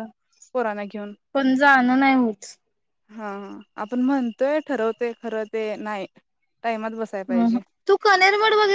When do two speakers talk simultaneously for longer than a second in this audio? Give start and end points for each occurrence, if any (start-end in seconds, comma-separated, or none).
none